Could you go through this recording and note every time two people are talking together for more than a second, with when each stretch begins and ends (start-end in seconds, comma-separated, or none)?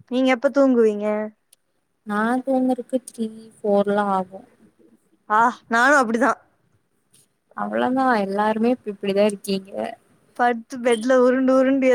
none